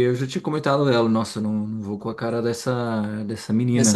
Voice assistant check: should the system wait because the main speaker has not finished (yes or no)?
yes